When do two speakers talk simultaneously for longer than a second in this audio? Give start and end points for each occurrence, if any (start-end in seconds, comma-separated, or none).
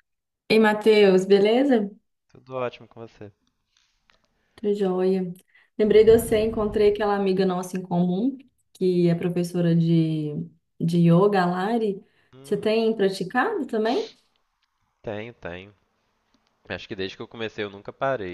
none